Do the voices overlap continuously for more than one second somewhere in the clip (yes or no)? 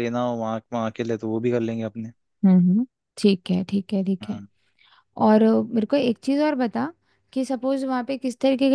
no